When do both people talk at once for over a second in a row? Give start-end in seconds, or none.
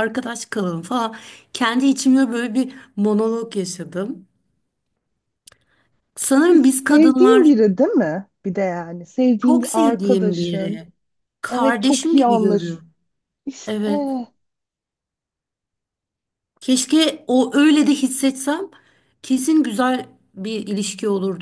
6.2-7.5, 9.4-10.9, 11.5-12.8